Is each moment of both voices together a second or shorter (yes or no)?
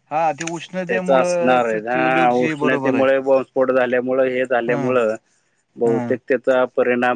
no